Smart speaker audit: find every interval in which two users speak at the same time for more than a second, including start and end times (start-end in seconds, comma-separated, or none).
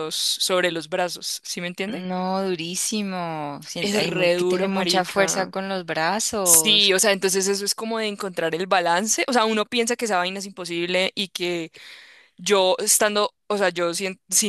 3.8-5.5